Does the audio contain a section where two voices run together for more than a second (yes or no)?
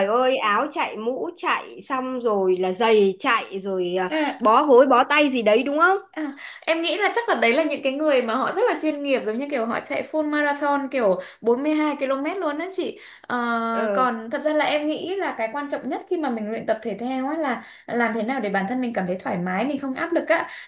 no